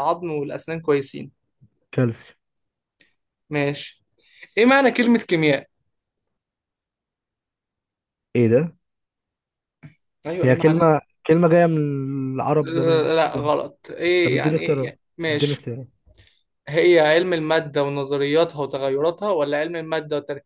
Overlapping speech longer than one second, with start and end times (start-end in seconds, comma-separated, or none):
14.2-15.7